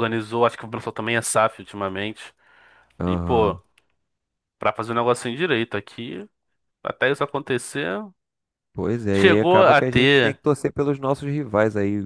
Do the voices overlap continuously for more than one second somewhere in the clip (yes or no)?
yes